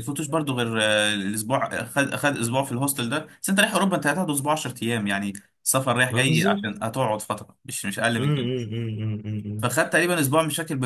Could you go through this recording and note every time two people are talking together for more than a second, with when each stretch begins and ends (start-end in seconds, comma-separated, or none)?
none